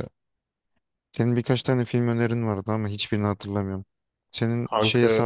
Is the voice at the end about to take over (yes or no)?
no